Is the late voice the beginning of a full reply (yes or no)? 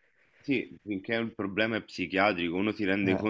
no